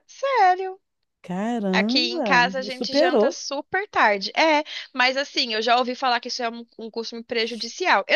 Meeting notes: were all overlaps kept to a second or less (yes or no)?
no